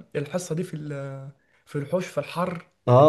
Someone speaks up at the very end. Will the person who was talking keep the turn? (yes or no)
no